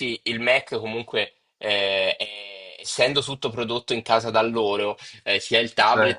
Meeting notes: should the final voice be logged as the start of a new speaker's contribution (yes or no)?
no